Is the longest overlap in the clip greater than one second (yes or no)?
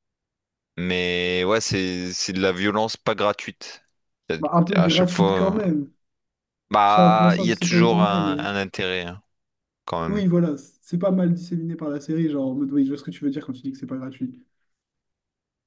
yes